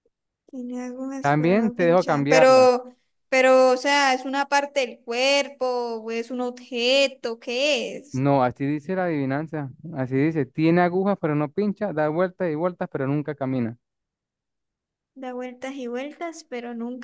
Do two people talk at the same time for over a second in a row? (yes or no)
yes